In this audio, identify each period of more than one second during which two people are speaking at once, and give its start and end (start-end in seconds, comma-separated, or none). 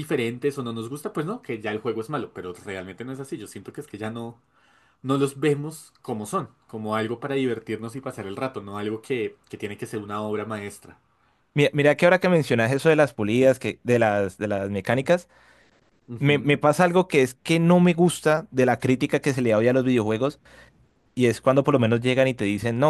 none